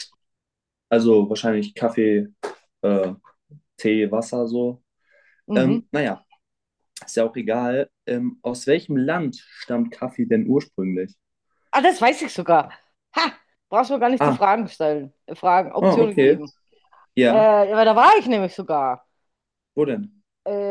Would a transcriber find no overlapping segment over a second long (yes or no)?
yes